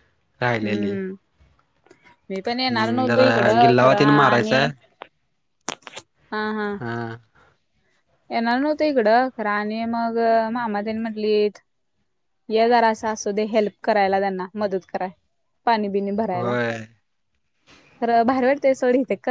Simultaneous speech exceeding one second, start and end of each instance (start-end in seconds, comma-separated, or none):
2.7-4.6